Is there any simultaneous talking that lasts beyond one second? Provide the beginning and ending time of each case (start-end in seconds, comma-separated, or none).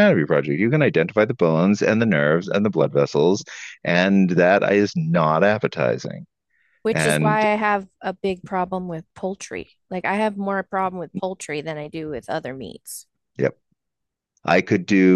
none